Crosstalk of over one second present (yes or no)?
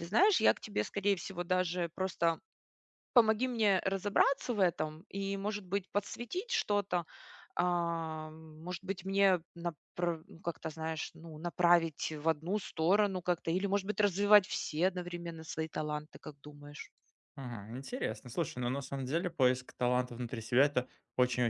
no